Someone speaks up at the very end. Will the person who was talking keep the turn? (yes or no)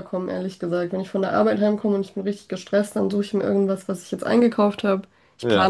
yes